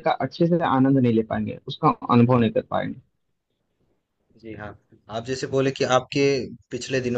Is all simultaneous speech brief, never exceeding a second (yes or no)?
yes